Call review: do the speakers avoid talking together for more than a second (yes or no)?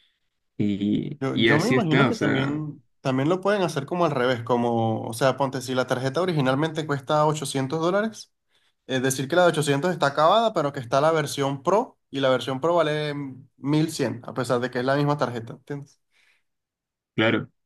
no